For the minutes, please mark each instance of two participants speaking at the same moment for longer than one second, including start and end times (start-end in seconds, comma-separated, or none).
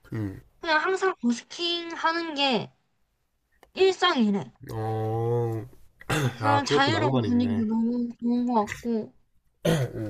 6.4-7.7